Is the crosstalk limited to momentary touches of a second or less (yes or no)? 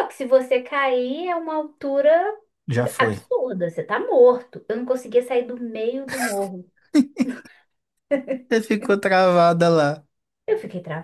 yes